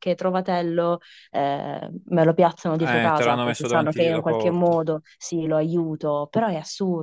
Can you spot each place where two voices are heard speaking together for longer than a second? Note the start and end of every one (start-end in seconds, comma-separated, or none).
2.8-4.7